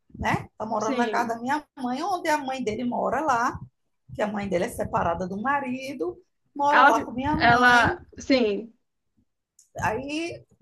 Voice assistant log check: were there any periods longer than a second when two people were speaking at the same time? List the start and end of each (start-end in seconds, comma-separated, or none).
6.7-8.0